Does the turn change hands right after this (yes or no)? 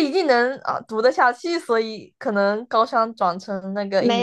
yes